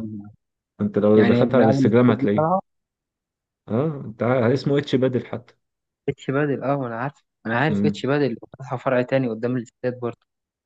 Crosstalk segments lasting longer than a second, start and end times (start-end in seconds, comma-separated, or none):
1.1-2.5